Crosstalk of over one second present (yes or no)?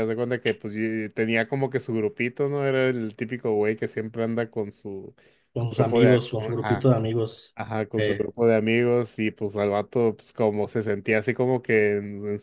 yes